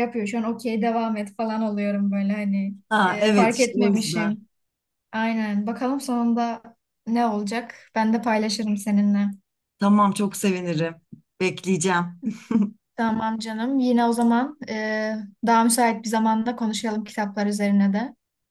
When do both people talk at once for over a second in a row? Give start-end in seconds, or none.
2.9-4.4